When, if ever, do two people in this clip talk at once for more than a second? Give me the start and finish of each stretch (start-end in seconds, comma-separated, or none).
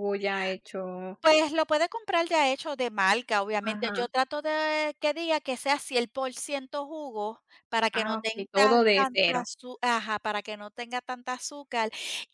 7.9-9.4